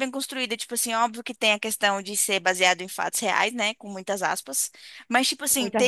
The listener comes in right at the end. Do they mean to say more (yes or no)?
no